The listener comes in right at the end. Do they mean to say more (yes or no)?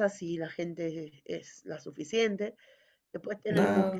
no